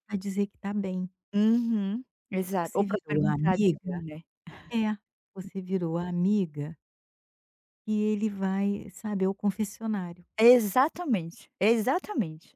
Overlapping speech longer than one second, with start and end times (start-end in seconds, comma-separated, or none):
2.6-4.1